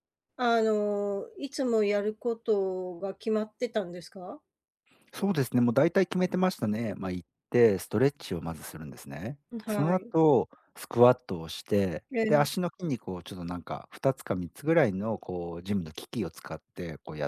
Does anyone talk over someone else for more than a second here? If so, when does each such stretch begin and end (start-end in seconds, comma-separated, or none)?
none